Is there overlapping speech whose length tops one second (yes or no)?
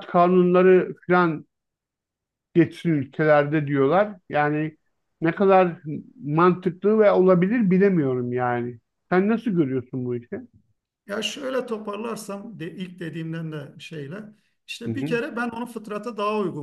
no